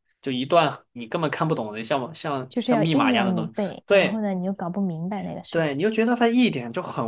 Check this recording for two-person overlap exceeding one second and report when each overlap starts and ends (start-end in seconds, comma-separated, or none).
2.5-4.2